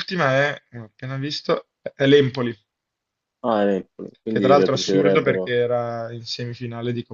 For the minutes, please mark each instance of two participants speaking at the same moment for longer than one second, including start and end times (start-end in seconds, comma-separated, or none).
4.3-5.5